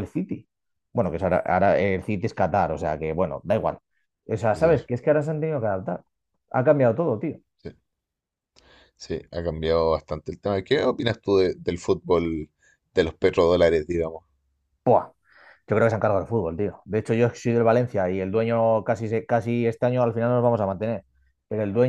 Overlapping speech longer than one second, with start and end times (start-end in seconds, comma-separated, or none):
none